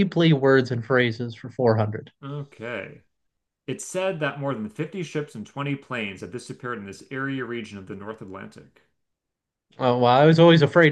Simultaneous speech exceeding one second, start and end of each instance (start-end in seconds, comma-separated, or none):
none